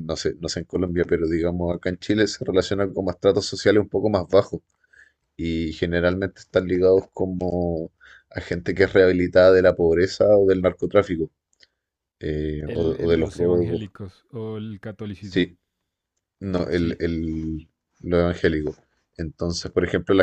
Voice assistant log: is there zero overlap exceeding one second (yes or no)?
no